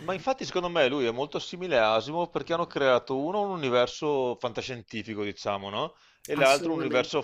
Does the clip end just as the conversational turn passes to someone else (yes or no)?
no